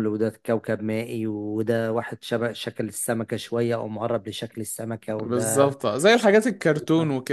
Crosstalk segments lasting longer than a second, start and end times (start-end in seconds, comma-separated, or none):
none